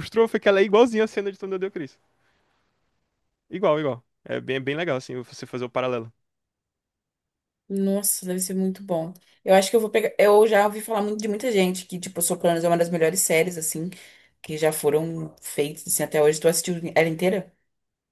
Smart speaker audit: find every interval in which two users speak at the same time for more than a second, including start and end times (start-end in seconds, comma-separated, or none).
none